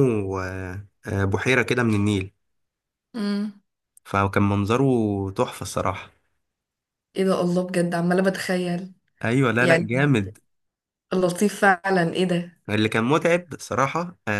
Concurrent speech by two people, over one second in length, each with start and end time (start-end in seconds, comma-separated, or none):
none